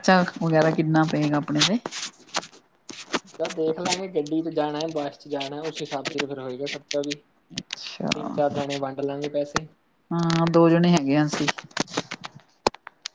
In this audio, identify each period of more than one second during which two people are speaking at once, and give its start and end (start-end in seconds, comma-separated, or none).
none